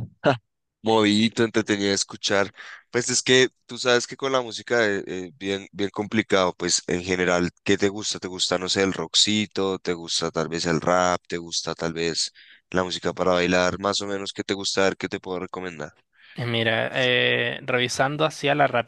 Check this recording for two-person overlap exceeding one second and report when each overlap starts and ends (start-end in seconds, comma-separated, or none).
none